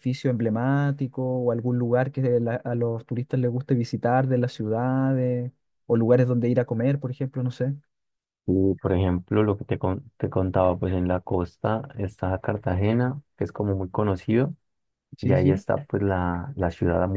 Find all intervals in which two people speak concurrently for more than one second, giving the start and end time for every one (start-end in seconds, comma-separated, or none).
none